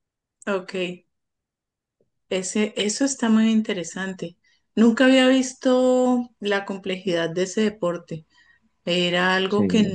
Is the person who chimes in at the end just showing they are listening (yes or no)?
yes